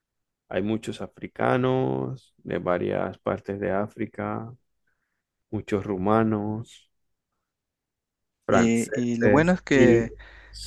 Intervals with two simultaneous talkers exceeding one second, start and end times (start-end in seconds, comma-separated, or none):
8.5-10.1